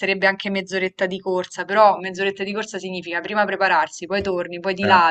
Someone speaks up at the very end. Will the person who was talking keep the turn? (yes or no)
yes